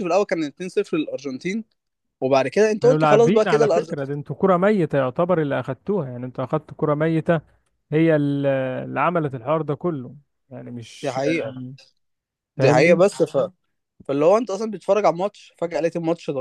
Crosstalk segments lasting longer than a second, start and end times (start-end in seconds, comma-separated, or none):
2.8-4.0